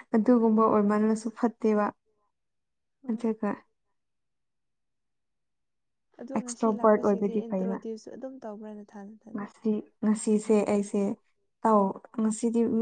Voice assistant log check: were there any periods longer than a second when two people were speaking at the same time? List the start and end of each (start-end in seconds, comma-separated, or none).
6.4-7.8